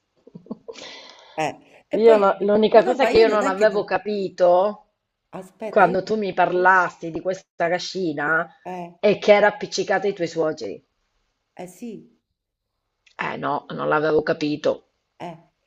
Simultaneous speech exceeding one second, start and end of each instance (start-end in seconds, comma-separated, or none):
2.1-3.9